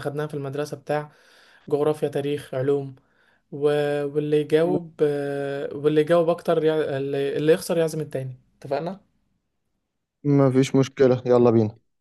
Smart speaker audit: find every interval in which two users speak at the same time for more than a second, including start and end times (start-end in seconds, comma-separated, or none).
none